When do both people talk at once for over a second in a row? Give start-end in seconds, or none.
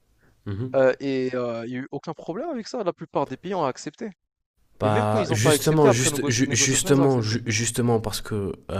4.8-7.3